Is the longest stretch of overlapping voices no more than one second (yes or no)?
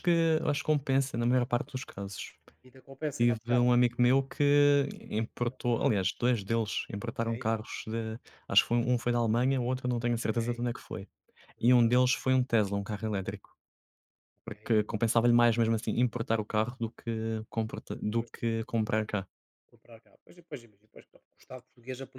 yes